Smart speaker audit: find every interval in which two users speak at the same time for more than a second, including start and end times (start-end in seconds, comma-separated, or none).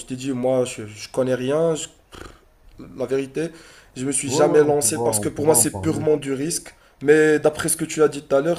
4.2-6.0